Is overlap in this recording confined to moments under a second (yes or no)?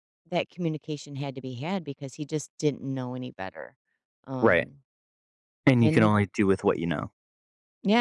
yes